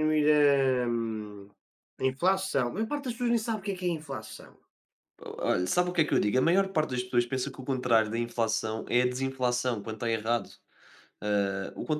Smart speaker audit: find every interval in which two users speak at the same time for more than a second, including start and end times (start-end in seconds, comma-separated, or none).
none